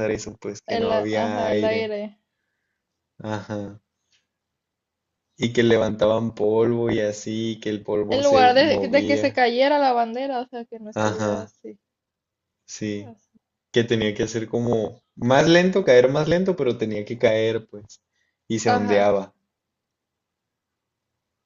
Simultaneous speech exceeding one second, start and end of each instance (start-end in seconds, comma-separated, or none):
0.7-1.9, 8.1-9.4